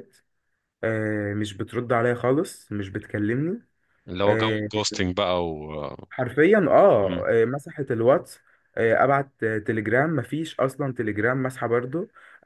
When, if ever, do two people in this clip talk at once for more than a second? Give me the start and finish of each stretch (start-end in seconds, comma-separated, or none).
none